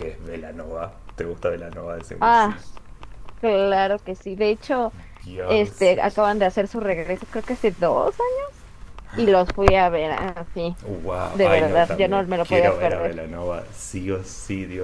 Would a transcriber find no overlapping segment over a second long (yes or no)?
no